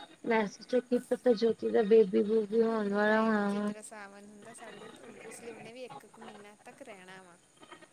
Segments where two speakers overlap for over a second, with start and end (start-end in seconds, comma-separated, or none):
none